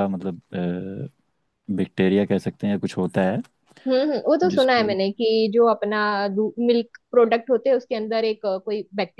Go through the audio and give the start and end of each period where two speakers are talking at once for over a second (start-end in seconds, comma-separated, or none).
none